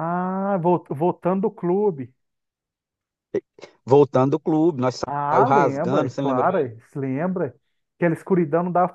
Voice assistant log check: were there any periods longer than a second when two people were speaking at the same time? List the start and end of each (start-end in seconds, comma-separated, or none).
5.1-6.7